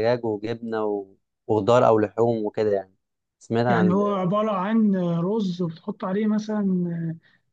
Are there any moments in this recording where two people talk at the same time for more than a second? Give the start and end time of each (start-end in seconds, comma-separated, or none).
none